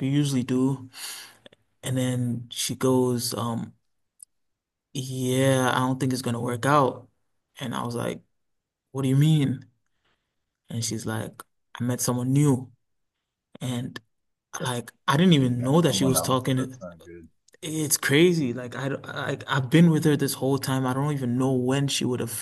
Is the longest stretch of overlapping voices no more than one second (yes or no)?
no